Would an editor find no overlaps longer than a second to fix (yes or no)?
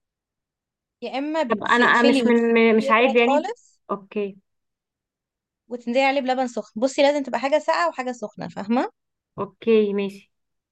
no